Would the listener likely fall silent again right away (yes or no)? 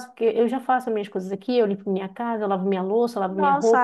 no